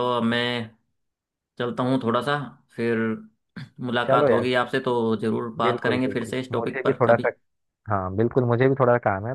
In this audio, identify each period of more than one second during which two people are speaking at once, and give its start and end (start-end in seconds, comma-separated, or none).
5.6-7.3